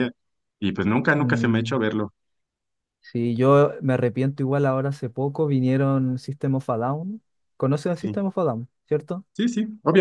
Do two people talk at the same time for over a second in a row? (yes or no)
no